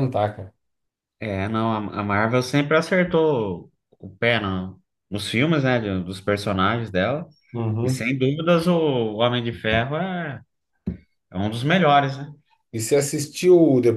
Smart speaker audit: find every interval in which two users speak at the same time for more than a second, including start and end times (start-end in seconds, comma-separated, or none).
none